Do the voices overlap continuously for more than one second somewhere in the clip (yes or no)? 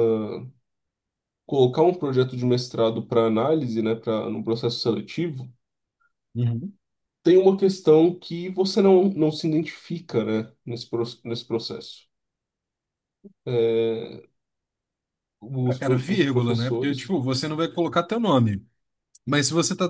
yes